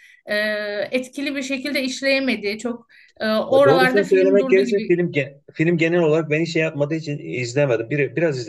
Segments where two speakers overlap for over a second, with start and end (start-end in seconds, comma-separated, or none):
3.5-5.0